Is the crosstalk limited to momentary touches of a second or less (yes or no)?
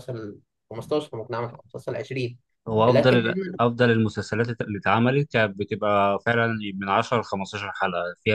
yes